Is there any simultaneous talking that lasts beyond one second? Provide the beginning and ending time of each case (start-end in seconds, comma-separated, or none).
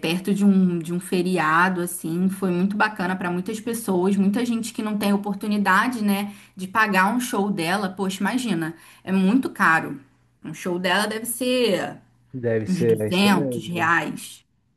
12.7-13.9